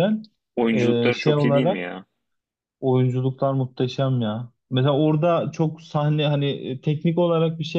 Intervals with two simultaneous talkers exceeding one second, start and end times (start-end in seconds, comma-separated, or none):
0.7-2.0